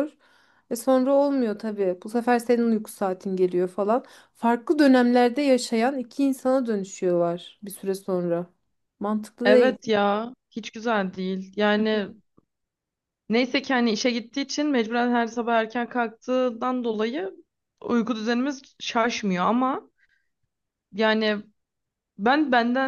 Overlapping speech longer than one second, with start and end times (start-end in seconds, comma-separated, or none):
none